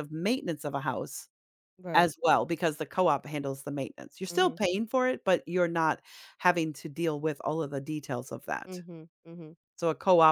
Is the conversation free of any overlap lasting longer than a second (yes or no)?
yes